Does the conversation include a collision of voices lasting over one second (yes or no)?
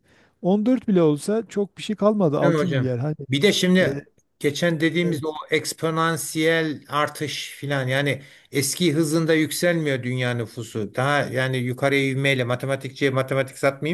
no